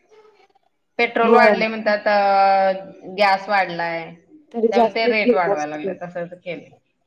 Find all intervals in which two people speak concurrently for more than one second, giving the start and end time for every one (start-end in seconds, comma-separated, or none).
4.7-5.9